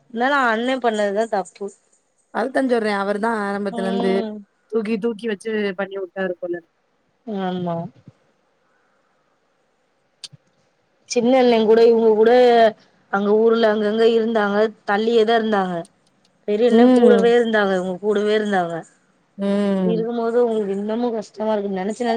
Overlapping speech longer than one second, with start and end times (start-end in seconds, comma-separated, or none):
none